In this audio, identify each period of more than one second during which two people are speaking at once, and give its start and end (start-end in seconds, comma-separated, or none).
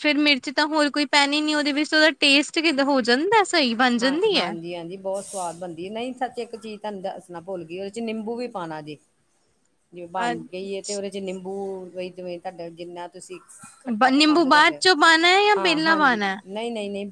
14.1-16.4